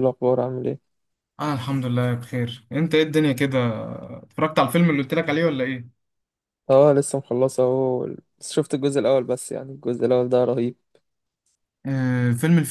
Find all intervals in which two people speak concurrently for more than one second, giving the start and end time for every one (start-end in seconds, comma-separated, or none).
none